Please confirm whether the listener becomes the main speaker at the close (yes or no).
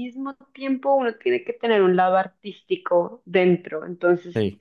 no